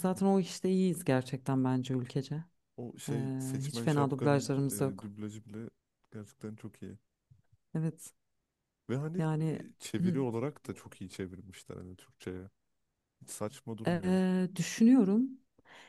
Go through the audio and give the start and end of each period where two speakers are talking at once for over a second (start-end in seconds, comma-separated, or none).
3.1-5.1